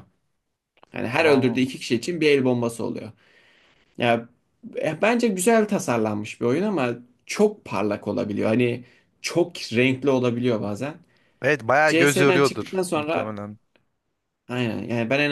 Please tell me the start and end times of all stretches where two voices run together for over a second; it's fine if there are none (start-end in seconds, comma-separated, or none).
11.9-13.4